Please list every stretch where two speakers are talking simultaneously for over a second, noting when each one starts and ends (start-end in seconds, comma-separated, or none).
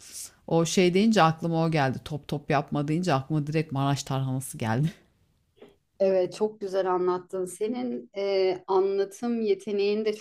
none